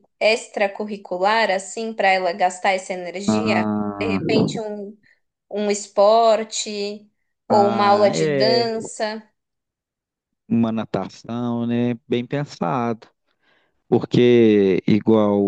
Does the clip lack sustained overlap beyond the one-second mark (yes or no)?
no